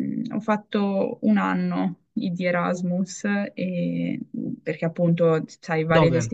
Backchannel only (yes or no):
yes